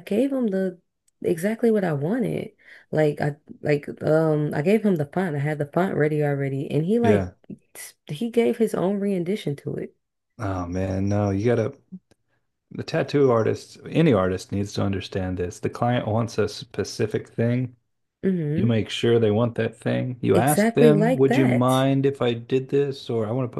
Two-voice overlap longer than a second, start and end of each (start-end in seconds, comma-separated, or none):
20.3-21.8